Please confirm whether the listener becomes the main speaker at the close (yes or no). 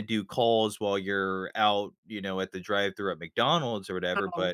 no